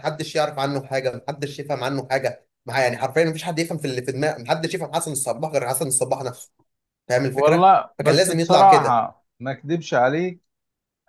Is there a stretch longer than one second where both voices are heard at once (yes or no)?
yes